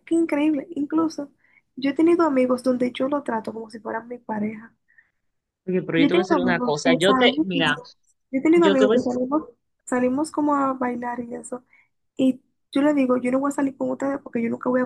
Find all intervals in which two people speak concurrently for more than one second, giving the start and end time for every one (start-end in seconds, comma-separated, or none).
6.0-7.5